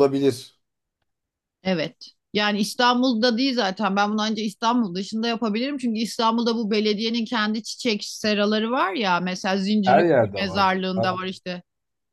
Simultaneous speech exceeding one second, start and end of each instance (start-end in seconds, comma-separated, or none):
9.8-11.2